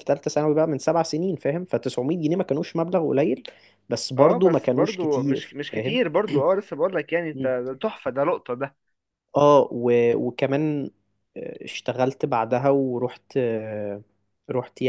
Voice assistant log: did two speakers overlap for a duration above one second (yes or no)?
yes